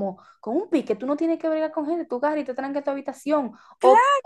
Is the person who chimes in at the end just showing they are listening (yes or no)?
yes